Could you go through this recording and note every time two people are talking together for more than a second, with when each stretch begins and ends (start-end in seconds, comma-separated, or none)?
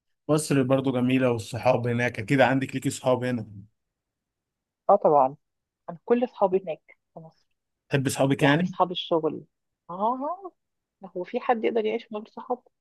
none